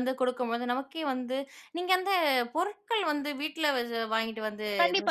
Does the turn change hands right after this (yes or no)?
yes